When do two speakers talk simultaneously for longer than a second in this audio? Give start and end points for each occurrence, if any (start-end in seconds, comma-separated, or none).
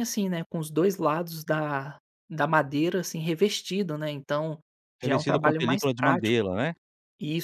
5.0-6.5